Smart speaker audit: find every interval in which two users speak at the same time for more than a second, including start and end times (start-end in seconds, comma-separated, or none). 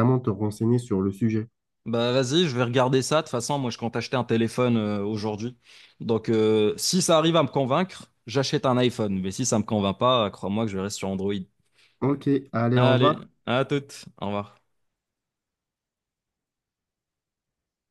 none